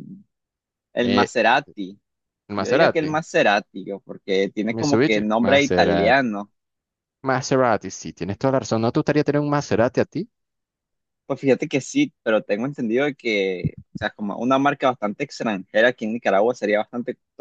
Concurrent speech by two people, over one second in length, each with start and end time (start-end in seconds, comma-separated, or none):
4.7-6.2